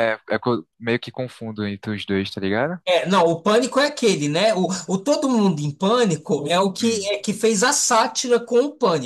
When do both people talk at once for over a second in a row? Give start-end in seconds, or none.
none